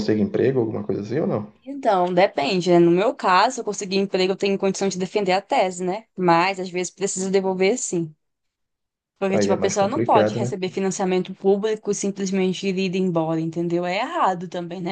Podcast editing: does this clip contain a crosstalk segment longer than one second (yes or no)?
yes